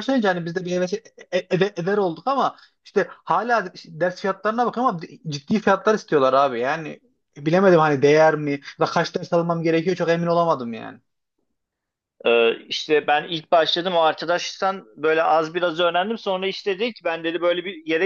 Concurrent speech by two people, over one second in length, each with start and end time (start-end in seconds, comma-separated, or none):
none